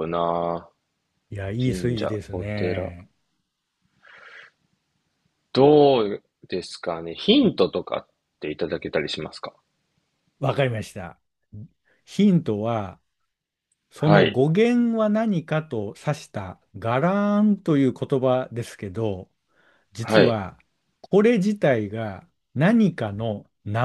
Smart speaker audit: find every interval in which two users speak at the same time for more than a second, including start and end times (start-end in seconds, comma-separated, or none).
1.6-2.9